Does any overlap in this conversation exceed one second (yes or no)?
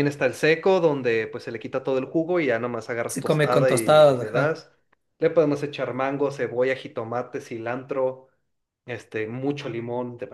yes